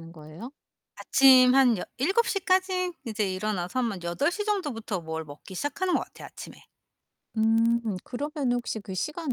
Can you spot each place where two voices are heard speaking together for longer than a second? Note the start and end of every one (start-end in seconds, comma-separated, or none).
none